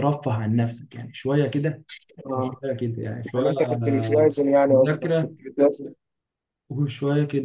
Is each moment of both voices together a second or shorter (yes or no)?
no